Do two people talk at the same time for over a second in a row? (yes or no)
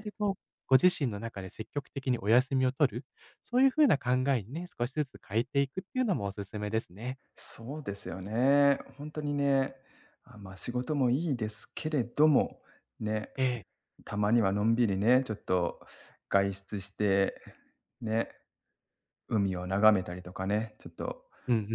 no